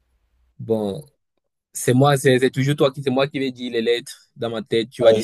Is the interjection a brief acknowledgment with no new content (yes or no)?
no